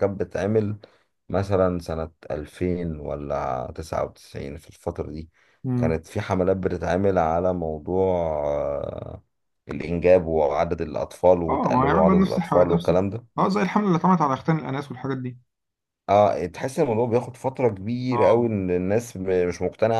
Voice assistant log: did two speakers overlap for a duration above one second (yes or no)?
yes